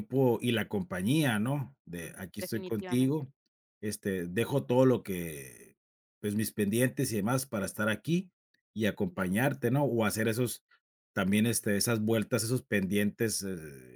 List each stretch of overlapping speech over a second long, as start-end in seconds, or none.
1.9-3.3